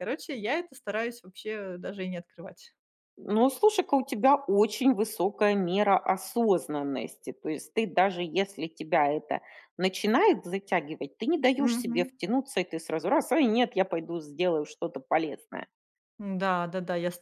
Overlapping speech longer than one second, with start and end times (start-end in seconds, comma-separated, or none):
none